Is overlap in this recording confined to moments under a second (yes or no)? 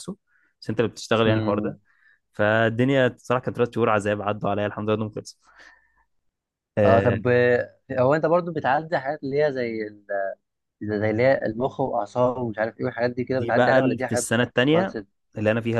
no